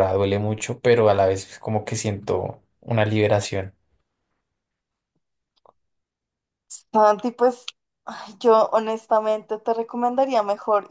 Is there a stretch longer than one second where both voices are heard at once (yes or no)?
no